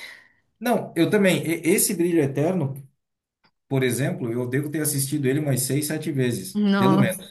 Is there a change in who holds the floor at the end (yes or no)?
no